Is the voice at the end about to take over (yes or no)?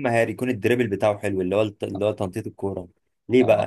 no